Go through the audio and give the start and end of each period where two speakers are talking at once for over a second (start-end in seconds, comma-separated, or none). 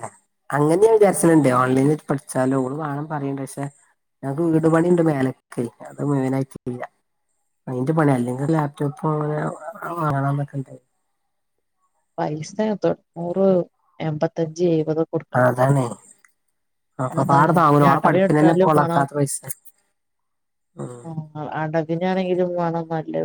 17.2-19.0